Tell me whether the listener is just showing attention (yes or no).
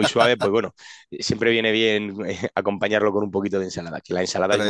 yes